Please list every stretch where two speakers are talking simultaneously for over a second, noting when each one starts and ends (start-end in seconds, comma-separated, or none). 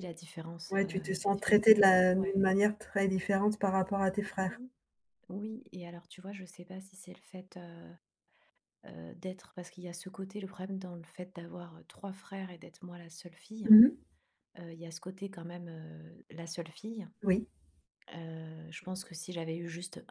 0.7-2.3